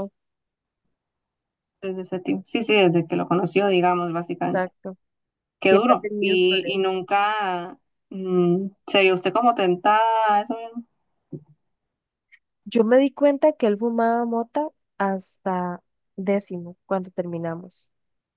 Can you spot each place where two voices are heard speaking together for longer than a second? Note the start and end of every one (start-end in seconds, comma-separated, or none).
5.6-7.1